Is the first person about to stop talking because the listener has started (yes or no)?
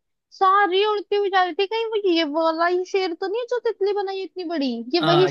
yes